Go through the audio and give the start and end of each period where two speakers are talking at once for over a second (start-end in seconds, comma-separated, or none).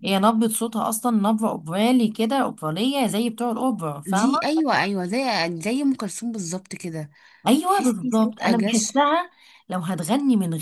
7.7-8.8